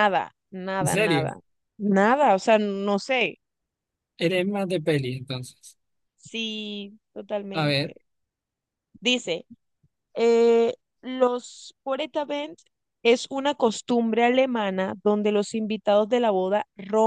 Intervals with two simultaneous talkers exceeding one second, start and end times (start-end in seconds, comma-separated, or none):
none